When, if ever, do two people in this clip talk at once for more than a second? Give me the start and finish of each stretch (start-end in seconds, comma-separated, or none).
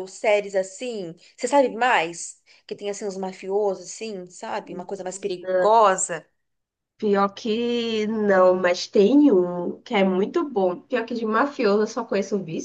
none